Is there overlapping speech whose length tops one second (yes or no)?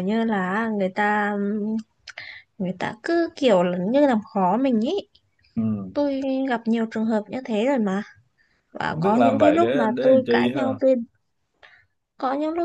yes